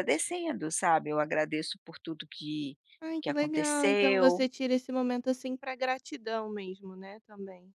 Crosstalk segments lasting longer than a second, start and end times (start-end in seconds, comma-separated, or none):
3.2-4.5